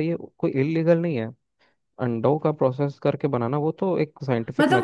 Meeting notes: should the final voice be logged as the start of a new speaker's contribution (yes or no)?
yes